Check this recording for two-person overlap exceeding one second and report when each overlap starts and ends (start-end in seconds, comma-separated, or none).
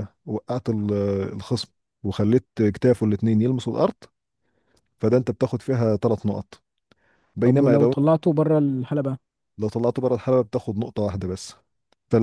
none